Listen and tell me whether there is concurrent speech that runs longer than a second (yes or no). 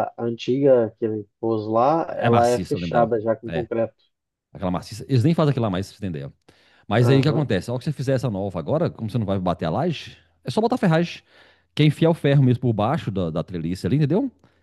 yes